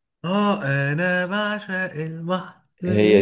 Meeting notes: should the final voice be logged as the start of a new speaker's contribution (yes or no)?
no